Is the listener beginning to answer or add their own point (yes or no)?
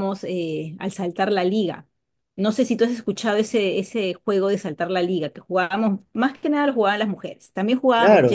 yes